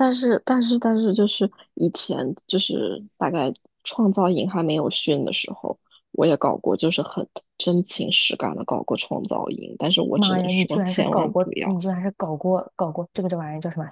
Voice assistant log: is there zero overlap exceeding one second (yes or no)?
no